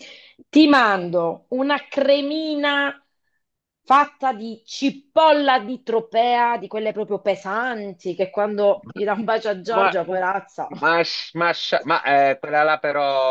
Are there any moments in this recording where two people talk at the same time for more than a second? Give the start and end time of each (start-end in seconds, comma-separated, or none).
none